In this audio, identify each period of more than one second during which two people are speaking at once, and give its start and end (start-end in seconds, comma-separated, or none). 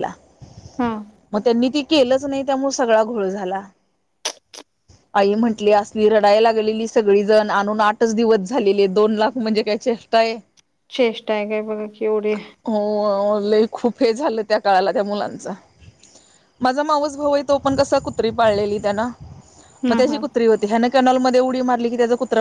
none